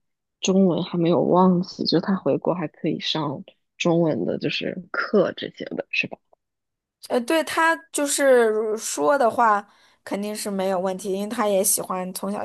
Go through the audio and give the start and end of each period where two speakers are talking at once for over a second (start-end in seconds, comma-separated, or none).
none